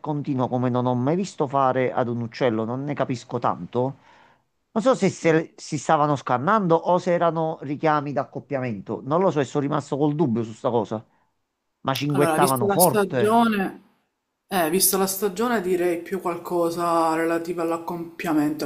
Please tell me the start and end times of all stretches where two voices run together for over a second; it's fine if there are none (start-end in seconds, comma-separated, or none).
12.1-13.4